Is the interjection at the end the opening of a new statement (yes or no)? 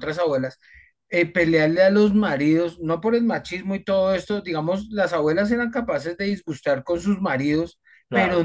no